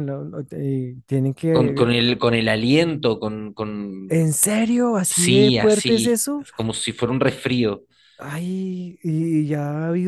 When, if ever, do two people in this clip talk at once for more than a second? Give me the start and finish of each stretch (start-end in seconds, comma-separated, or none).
5.0-6.5